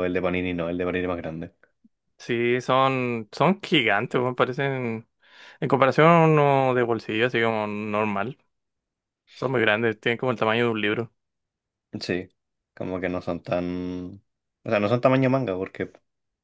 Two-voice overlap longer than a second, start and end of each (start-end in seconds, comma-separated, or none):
none